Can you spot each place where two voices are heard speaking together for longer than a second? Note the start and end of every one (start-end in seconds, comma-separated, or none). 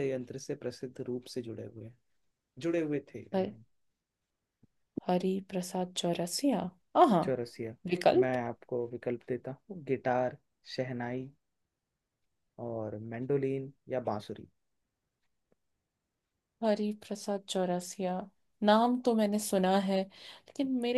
none